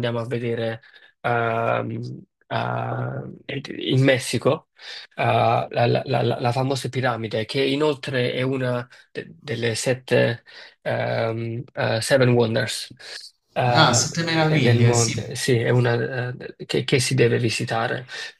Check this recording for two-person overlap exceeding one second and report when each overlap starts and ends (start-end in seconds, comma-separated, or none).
13.7-15.2